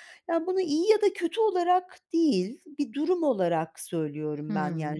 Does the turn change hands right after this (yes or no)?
yes